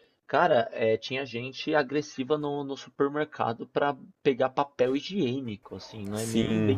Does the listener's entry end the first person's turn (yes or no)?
no